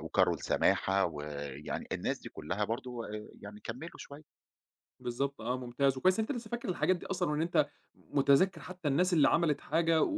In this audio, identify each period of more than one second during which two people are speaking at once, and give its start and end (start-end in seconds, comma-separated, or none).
none